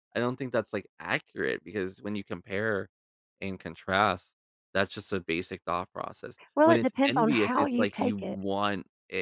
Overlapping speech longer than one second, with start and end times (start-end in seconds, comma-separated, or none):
6.6-8.4